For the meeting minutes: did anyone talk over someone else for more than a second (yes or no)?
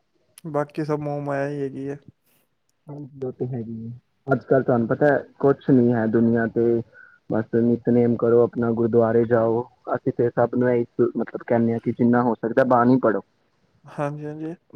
no